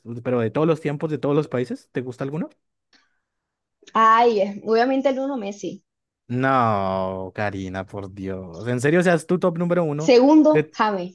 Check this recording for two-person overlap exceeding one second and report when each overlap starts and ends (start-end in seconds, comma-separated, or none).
none